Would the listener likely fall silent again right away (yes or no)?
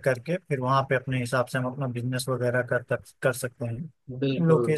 yes